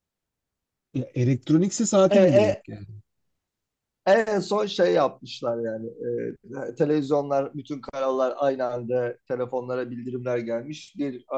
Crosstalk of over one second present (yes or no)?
no